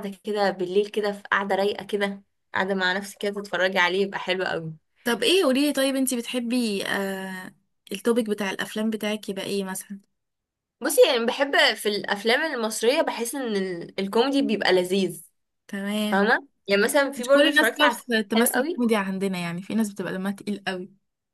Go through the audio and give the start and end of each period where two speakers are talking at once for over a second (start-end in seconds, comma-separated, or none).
17.2-18.9